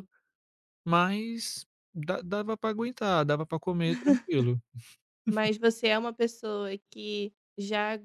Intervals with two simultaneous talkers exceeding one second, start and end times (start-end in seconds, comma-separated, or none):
none